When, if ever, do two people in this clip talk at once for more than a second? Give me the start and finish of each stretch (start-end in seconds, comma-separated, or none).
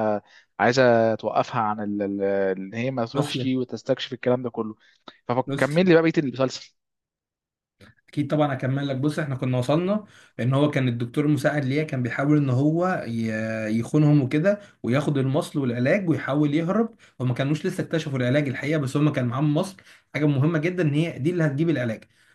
none